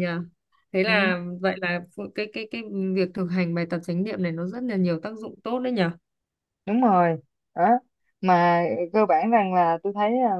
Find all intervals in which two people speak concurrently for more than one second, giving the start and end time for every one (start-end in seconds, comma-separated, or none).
none